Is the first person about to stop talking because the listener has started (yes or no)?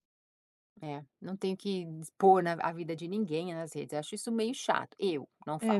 yes